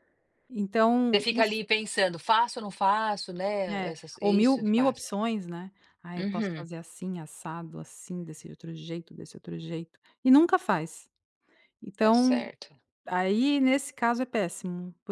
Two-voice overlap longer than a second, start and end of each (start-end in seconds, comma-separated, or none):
3.7-5.1